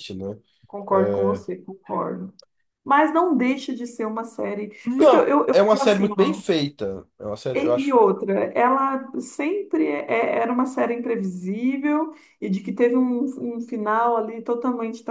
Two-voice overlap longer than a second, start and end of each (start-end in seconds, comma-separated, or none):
4.8-6.4